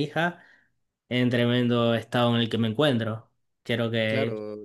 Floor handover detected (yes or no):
no